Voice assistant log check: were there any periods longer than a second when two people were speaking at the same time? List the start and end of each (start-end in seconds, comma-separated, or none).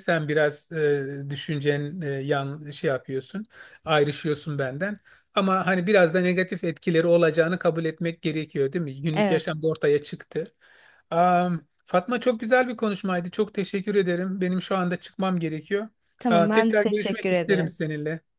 16.3-17.8